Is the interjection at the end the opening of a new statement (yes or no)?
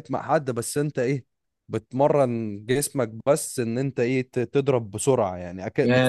yes